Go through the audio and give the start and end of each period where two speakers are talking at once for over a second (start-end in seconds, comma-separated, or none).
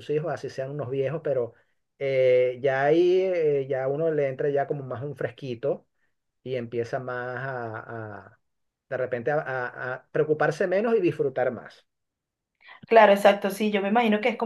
none